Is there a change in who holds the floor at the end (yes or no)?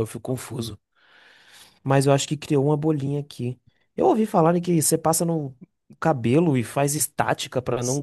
yes